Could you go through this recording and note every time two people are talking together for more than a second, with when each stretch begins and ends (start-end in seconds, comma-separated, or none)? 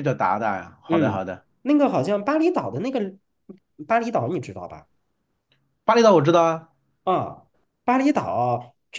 none